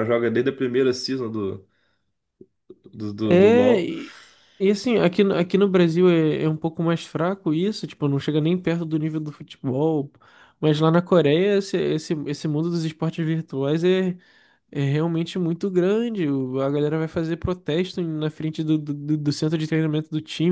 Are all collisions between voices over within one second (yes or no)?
yes